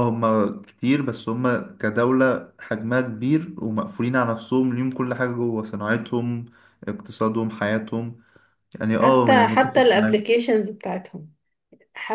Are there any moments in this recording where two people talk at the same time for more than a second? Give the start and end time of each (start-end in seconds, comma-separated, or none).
9.0-10.2